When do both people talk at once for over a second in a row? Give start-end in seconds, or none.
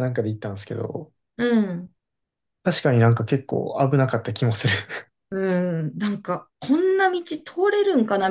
none